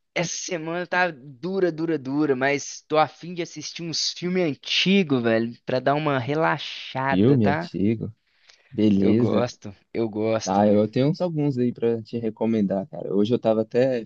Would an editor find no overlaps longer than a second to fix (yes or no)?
yes